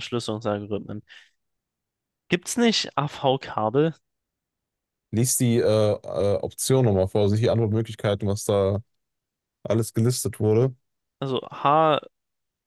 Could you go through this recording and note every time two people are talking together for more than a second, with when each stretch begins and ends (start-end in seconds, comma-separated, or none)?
none